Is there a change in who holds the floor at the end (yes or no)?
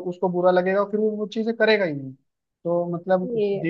no